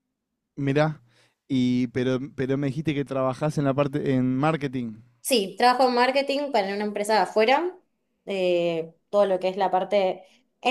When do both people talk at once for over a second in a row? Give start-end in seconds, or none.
none